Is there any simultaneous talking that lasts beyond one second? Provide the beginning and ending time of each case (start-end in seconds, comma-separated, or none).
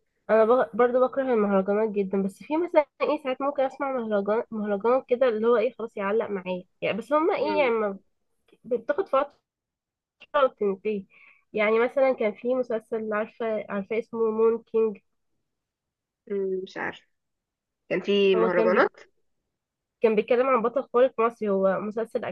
none